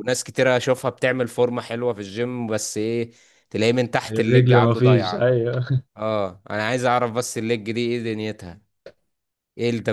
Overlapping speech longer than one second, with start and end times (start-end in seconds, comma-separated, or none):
4.1-5.3